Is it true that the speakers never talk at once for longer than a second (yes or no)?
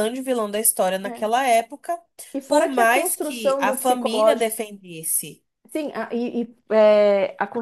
no